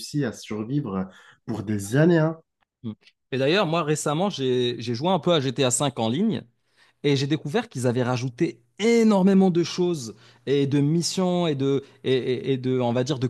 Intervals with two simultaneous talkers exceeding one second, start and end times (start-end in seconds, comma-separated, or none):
none